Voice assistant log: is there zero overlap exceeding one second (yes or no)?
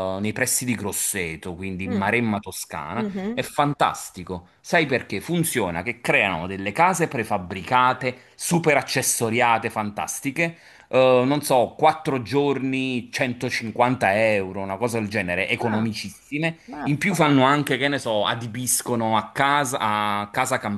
yes